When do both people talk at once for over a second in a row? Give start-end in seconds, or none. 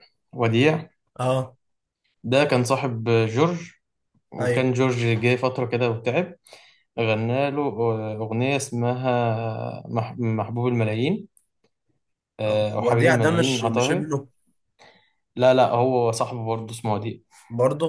12.5-14.1